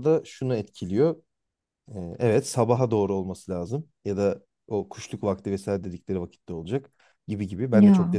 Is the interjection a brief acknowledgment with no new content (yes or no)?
yes